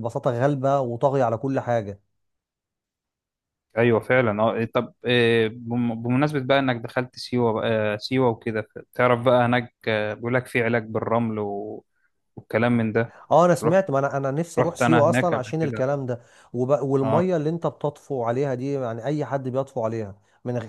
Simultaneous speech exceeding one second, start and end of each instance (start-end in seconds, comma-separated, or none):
14.6-15.9